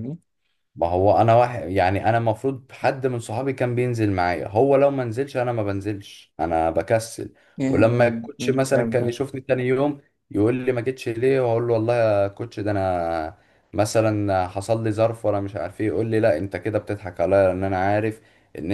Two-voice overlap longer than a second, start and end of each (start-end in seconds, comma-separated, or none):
7.7-9.1